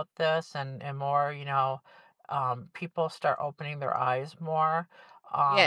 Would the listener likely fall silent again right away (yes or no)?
no